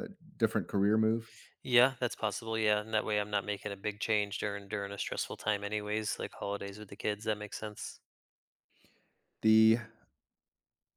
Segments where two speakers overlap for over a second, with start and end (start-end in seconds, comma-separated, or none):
none